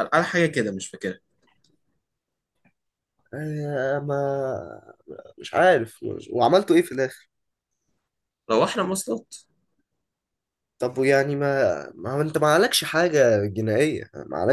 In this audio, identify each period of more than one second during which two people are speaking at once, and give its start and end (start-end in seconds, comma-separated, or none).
none